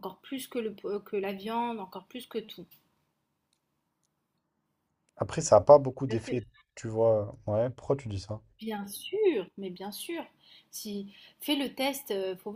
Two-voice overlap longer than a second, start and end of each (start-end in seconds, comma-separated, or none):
none